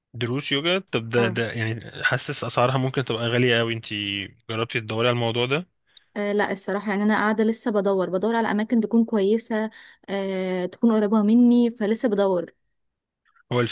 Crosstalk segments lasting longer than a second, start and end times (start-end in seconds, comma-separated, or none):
none